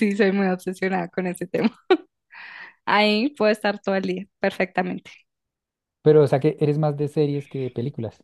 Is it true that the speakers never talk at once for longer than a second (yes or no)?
yes